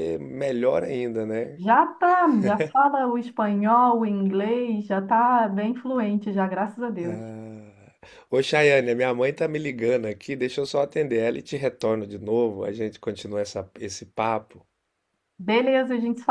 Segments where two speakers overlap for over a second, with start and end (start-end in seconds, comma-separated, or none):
none